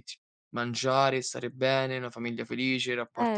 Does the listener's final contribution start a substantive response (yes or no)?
no